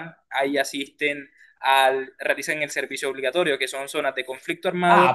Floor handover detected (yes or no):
yes